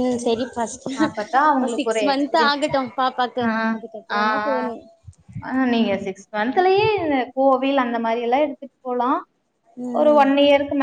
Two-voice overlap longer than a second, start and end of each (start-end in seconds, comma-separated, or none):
1.1-2.6